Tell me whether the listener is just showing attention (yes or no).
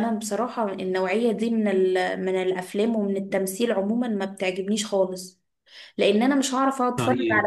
yes